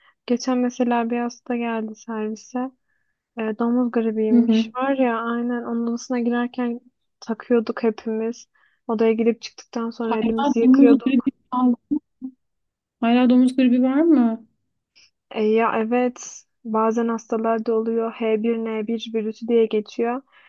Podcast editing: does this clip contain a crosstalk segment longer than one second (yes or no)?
yes